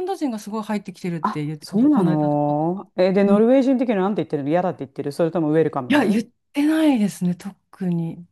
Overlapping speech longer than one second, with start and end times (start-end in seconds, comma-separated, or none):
1.2-2.6